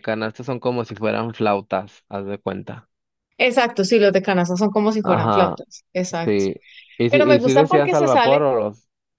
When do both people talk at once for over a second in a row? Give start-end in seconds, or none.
7.1-8.4